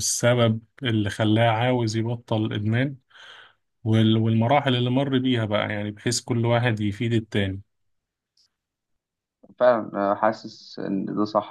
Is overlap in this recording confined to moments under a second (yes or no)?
yes